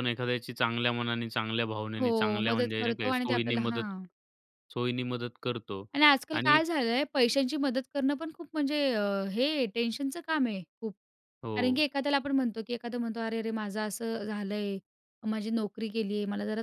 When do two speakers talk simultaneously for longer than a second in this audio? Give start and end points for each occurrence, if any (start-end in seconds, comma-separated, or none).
2.0-3.9